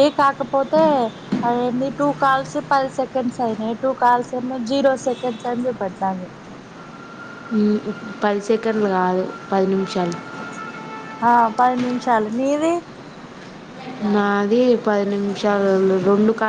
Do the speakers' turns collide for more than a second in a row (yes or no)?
no